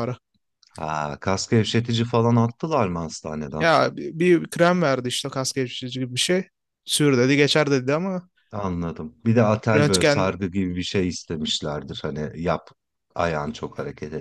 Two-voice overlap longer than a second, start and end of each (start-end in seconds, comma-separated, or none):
none